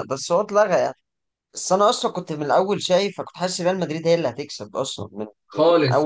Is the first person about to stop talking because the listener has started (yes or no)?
no